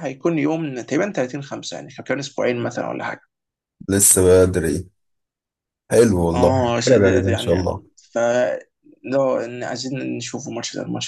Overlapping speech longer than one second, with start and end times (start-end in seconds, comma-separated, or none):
6.3-7.8